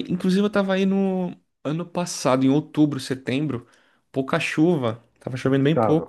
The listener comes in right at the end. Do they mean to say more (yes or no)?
no